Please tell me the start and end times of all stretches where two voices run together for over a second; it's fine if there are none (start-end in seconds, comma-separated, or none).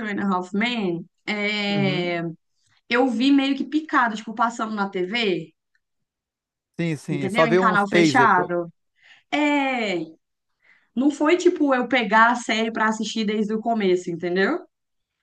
7.1-8.5